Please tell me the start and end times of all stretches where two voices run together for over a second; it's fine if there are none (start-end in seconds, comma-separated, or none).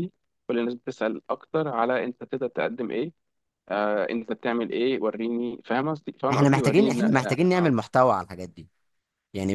6.3-7.7